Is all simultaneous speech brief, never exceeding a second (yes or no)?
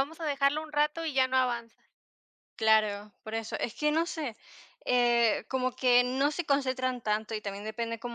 yes